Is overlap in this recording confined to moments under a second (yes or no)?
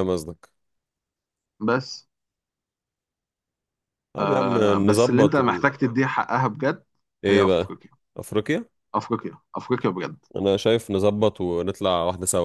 no